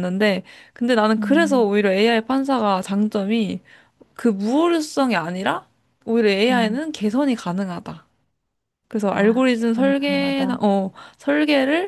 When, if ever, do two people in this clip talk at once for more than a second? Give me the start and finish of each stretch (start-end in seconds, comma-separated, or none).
9.1-10.6